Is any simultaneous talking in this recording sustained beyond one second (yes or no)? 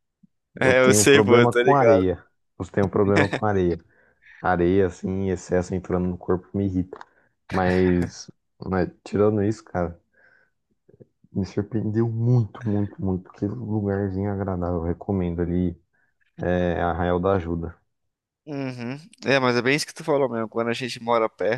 yes